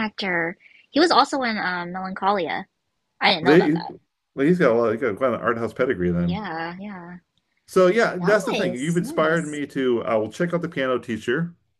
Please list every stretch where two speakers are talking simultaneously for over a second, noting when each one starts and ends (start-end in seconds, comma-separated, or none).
8.1-9.6